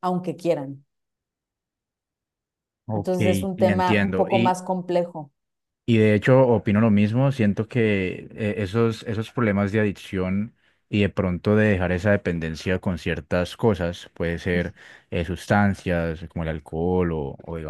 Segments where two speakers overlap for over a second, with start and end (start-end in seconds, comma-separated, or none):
2.9-4.6